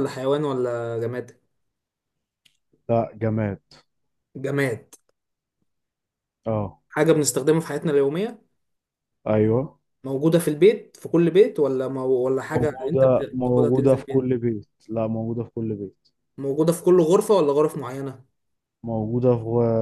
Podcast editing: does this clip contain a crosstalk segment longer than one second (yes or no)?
yes